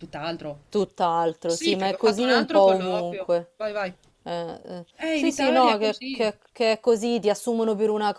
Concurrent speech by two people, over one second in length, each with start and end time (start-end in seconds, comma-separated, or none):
1.4-3.5, 5.0-6.3